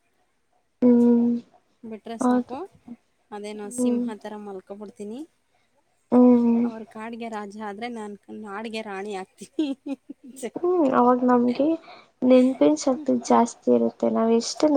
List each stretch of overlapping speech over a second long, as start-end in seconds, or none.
none